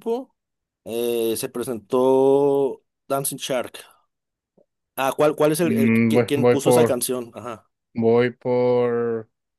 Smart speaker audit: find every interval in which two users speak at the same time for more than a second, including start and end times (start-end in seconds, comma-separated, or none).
5.6-7.0